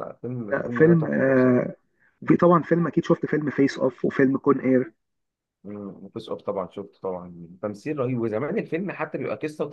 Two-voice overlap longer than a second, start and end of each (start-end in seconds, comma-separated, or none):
0.5-1.8